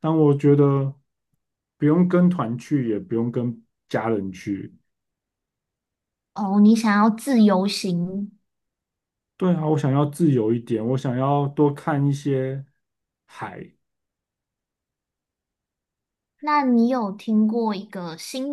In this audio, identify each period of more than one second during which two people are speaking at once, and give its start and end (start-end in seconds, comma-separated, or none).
none